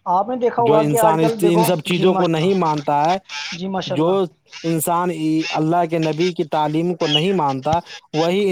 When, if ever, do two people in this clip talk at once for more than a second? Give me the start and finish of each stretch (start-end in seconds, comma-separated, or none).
0.7-2.7